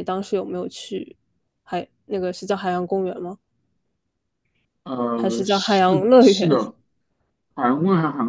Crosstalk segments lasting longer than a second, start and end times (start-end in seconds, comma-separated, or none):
5.2-6.6